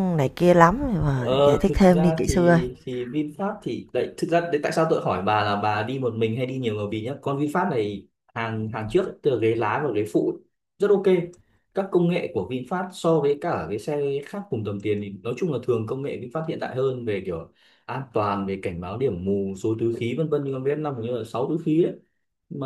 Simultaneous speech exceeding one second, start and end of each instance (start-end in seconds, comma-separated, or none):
1.1-2.6